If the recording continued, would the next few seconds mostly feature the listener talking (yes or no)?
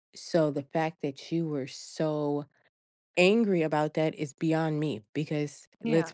no